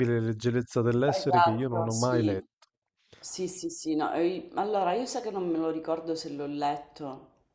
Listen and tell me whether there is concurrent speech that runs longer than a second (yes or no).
yes